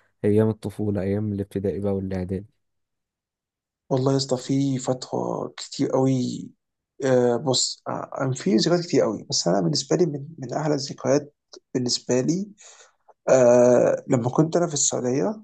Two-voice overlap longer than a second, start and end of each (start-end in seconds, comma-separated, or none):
none